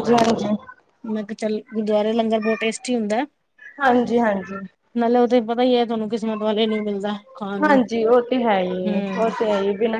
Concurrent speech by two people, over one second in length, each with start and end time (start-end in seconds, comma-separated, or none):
none